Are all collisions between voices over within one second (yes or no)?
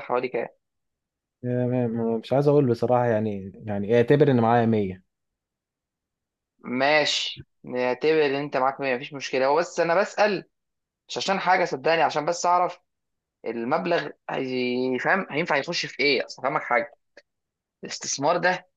yes